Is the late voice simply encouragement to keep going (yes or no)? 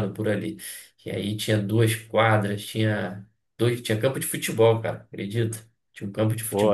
no